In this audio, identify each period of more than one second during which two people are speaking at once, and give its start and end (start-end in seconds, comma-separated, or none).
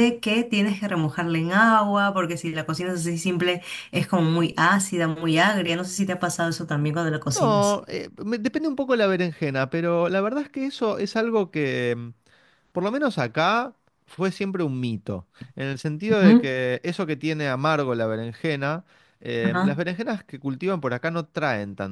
none